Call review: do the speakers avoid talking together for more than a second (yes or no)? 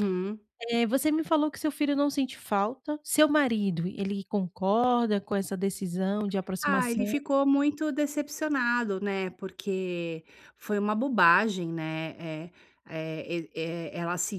yes